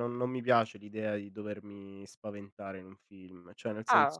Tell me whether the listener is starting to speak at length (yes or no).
no